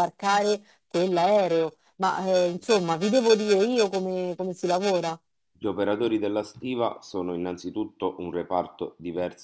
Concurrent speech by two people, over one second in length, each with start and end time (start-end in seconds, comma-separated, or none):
none